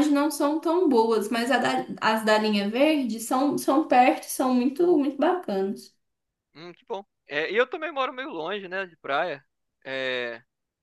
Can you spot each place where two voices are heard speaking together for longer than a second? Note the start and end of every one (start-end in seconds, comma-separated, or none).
none